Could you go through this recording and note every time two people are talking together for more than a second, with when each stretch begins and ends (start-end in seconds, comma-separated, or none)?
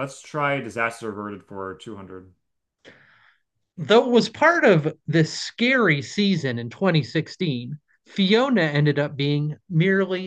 none